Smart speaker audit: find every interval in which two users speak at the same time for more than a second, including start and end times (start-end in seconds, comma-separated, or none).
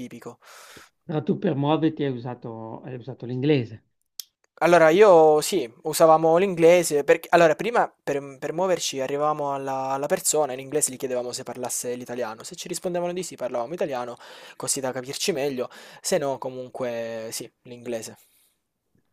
none